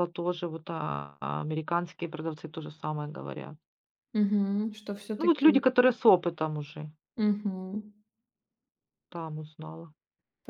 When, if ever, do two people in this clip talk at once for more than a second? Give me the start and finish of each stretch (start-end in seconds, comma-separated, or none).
none